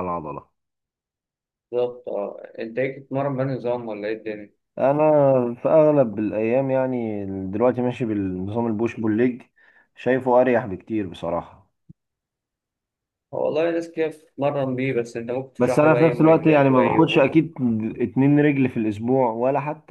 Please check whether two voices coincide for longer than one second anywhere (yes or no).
yes